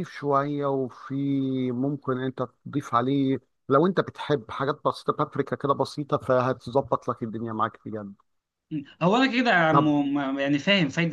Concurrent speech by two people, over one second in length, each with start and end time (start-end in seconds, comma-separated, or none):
none